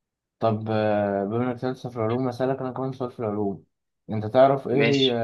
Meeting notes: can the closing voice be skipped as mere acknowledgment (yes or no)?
yes